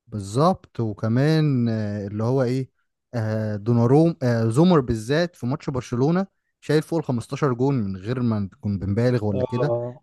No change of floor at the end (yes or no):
yes